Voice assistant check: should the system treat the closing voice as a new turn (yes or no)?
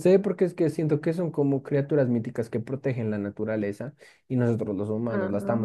no